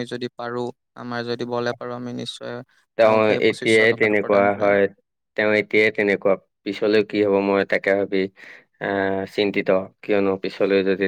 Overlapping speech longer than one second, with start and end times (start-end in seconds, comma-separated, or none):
3.0-4.7